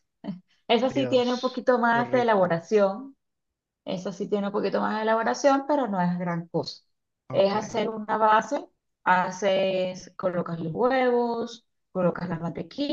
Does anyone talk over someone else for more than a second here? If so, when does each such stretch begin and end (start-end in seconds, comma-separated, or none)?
0.9-2.5